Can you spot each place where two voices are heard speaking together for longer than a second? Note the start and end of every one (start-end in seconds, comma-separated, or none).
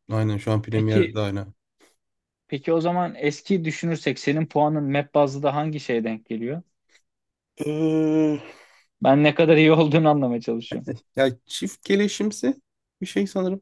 none